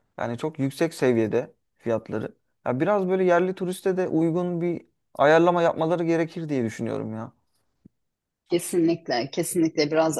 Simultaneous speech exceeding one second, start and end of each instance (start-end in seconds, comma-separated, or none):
none